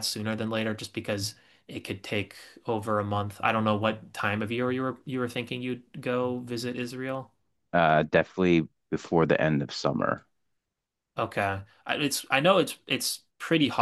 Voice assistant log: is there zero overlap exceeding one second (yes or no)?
yes